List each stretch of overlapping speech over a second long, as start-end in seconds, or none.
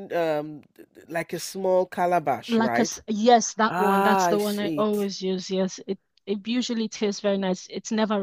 3.7-5.1